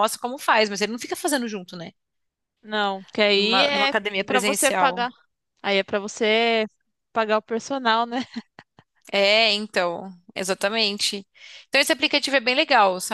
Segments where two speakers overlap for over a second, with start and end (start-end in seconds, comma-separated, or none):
3.4-5.1